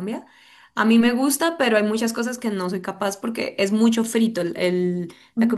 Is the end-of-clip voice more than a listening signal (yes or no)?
no